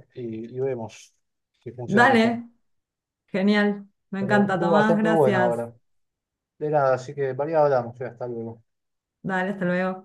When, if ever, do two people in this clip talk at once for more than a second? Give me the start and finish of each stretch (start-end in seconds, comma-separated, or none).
4.2-5.6